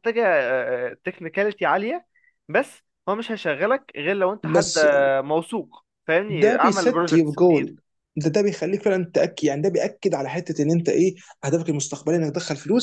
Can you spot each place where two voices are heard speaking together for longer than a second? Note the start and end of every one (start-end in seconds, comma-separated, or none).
6.3-7.8